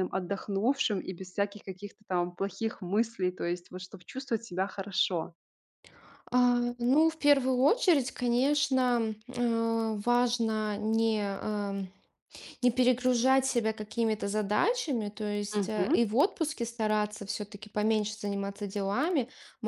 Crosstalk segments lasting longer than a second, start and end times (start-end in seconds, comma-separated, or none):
none